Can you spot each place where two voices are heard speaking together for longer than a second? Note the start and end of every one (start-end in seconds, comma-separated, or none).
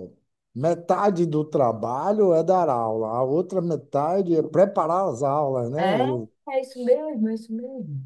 none